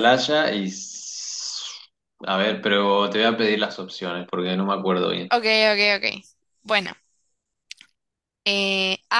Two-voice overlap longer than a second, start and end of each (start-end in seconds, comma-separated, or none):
none